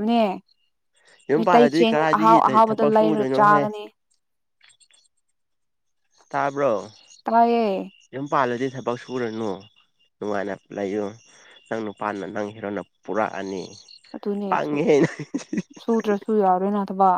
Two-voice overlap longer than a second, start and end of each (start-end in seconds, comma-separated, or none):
1.4-3.7